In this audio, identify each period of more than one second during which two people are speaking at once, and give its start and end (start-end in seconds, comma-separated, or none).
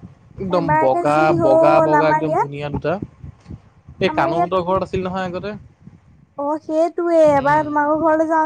0.6-2.5